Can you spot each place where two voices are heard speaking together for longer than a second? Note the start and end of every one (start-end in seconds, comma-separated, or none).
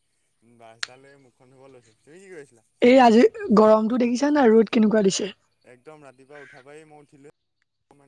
none